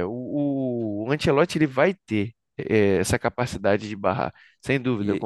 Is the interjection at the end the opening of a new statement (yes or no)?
yes